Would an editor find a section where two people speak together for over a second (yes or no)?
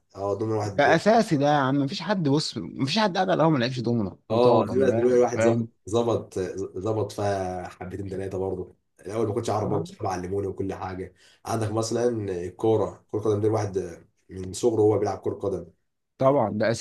yes